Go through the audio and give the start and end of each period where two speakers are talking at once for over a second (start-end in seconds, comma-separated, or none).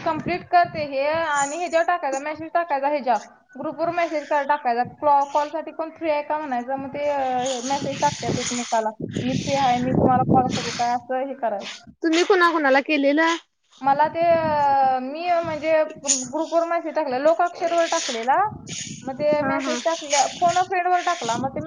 none